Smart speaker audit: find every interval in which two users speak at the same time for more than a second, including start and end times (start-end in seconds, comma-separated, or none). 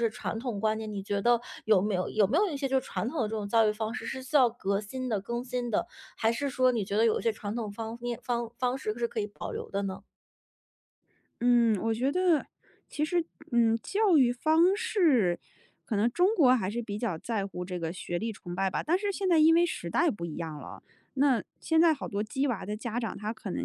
none